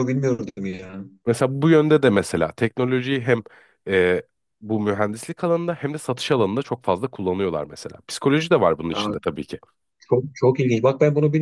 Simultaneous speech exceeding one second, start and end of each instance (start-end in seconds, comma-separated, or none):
none